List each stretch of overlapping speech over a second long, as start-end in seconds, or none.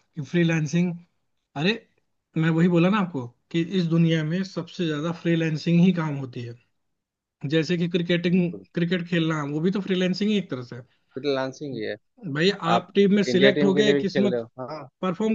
12.8-14.4